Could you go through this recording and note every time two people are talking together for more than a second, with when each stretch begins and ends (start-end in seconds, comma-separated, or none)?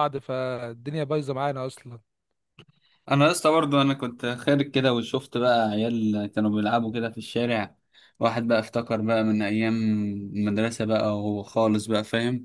none